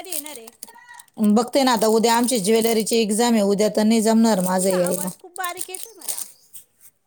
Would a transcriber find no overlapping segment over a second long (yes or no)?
yes